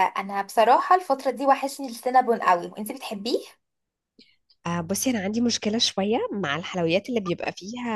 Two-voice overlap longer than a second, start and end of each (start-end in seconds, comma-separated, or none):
none